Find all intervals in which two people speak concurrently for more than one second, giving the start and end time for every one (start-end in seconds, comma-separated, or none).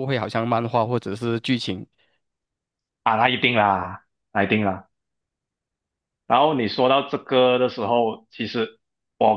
none